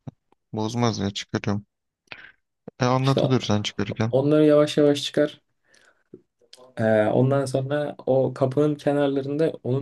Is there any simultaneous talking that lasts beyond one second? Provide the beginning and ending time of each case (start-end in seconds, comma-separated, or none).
none